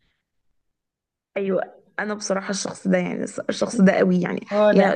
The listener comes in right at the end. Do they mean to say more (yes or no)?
no